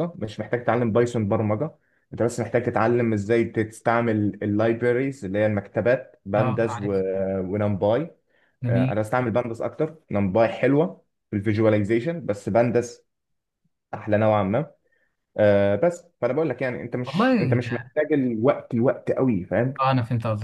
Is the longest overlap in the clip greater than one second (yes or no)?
no